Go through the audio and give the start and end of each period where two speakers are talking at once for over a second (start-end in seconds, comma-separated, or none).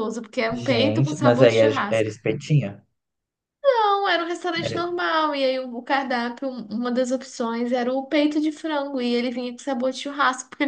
0.7-2.1